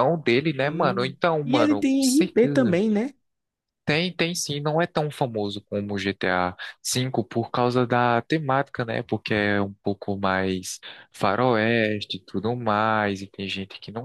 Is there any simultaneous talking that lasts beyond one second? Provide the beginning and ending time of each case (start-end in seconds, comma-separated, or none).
0.6-2.8